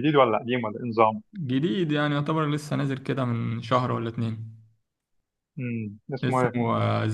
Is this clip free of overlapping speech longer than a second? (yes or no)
yes